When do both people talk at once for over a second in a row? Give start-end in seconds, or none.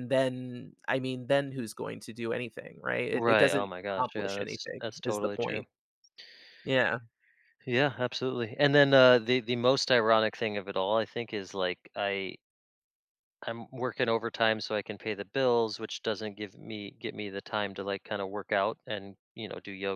3.1-5.7